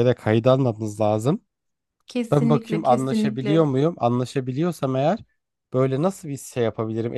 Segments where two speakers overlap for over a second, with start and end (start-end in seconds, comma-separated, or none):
2.3-3.6